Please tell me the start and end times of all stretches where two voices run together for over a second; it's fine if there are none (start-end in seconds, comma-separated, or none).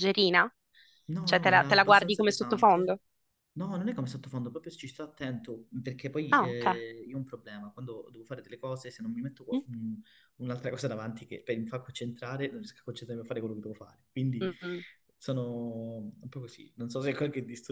1.2-2.9